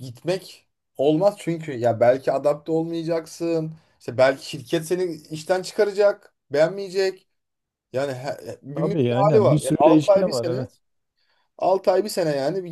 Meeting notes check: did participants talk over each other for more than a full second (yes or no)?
yes